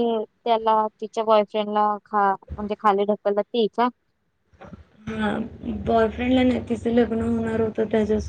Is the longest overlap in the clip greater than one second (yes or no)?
no